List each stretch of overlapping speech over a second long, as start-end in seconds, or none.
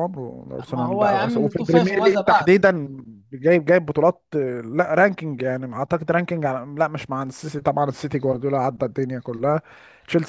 0.7-2.5